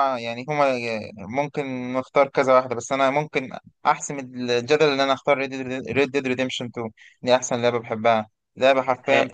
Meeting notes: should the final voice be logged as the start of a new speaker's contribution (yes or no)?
no